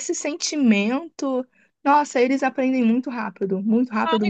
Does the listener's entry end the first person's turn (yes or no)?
yes